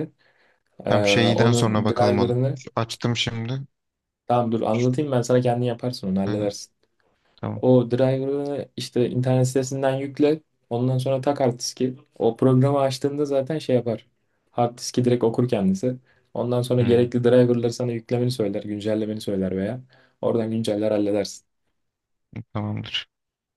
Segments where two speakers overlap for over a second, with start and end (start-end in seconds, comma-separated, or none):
0.9-2.6